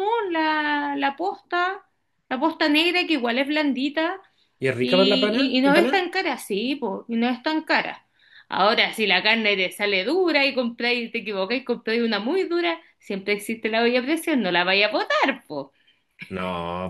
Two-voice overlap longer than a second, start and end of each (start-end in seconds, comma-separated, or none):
4.8-6.0